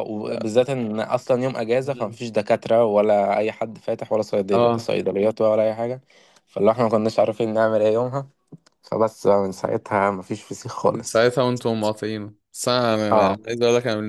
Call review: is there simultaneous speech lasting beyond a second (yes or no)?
no